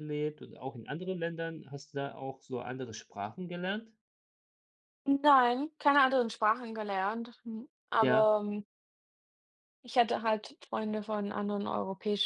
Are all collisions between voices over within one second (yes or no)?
yes